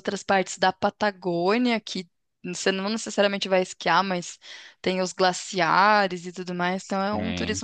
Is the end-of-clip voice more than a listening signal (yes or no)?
no